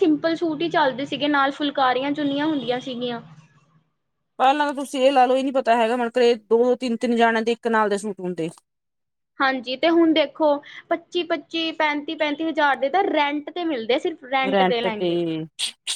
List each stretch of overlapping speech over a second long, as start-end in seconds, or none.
none